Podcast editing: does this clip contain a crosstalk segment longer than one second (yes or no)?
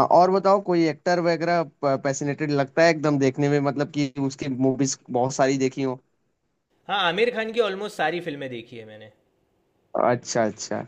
no